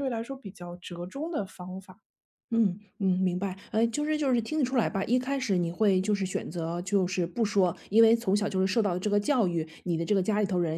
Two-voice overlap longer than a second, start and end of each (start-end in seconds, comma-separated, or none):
none